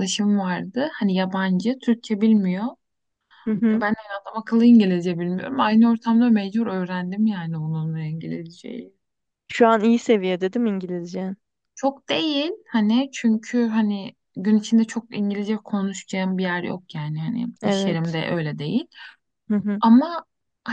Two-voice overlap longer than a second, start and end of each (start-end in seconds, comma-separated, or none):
none